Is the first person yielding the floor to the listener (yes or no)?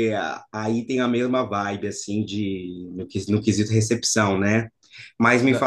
no